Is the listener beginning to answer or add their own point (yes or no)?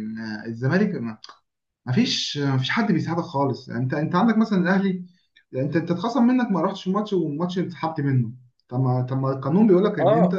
no